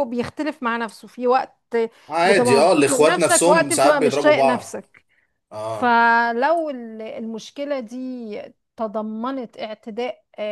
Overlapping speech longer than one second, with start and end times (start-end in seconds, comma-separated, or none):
2.2-4.8